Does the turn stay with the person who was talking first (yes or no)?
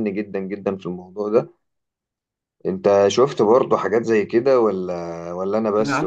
no